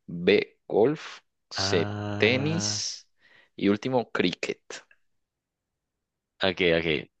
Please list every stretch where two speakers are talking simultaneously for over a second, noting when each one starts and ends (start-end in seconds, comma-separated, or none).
1.5-2.9